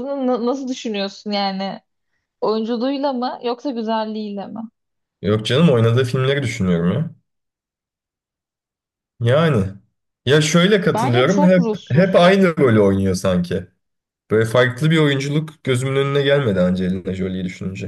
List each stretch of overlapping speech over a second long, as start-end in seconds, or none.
10.9-12.3